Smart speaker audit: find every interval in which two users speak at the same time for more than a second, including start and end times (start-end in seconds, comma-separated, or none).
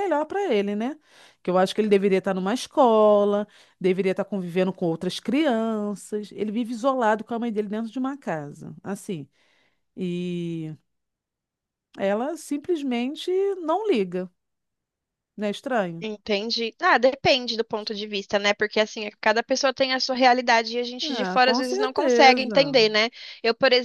21.0-22.4